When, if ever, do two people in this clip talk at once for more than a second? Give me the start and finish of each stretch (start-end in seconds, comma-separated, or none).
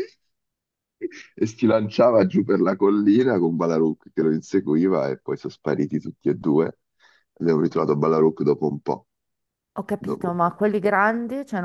none